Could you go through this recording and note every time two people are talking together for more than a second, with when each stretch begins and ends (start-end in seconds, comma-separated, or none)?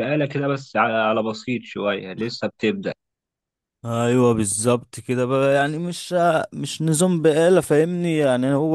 none